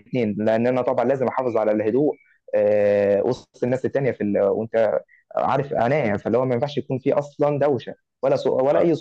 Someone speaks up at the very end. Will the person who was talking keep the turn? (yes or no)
no